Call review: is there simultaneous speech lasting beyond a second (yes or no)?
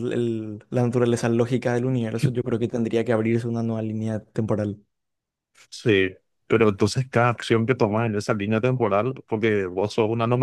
no